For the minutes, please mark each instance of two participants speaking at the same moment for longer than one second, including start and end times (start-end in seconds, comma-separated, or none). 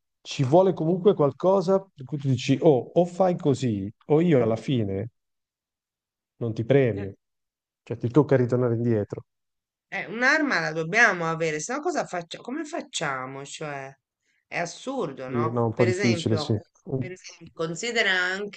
15.2-16.5